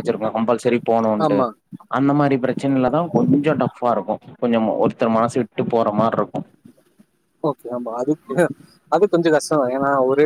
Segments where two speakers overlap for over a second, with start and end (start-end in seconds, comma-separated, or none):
none